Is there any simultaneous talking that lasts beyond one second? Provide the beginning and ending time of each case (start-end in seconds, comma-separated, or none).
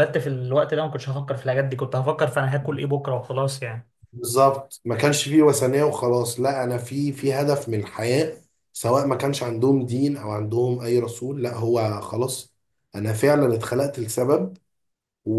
none